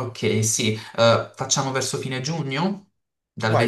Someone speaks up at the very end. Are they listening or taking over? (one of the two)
taking over